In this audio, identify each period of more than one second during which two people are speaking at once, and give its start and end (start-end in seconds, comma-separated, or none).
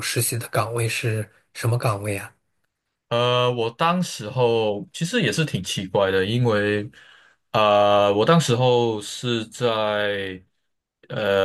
none